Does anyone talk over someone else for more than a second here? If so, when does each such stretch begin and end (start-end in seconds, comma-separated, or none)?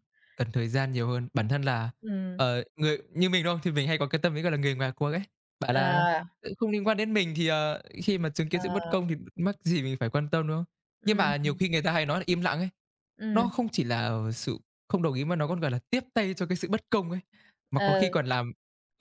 none